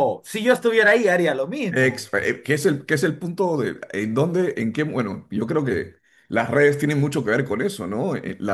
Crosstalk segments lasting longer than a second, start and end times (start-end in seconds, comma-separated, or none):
none